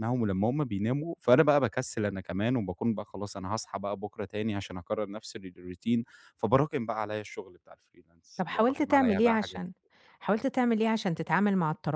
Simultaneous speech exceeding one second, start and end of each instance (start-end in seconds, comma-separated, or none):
8.4-9.6